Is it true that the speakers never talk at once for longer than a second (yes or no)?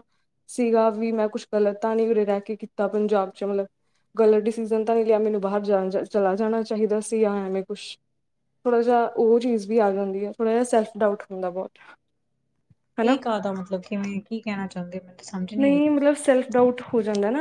yes